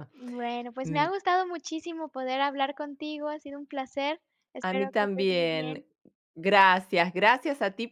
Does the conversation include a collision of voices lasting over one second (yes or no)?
yes